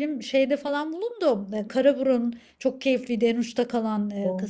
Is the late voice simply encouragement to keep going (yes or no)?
yes